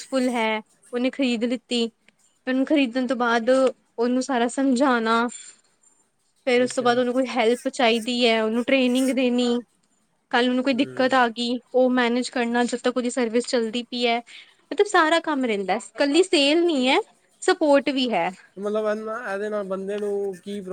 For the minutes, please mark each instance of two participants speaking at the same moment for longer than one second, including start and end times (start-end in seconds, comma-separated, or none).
none